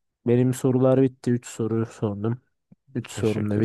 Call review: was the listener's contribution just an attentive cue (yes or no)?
no